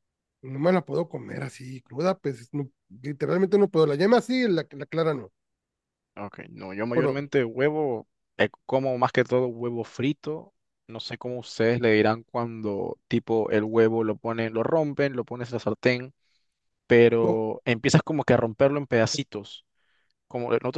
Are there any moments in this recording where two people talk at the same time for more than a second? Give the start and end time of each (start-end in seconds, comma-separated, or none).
none